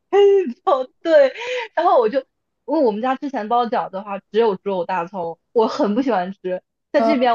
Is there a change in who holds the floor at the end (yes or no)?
no